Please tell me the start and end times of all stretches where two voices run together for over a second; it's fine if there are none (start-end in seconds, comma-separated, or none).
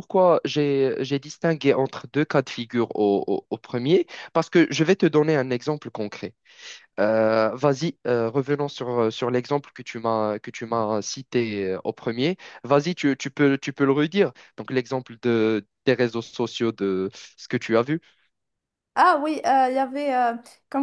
none